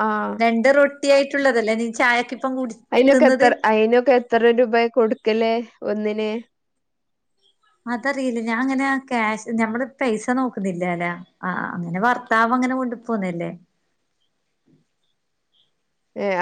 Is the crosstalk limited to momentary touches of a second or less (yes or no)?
yes